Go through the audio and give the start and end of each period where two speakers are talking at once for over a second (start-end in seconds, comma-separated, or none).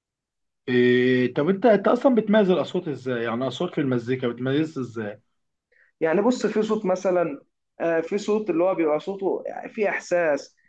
none